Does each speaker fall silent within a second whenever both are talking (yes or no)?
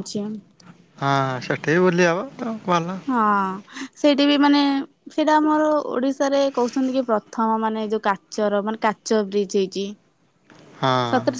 yes